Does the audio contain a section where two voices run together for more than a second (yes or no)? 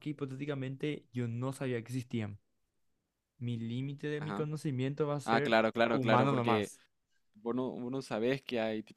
yes